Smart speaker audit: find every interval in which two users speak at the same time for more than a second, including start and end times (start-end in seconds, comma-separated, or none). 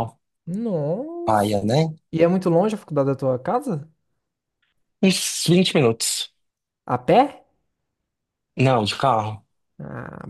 none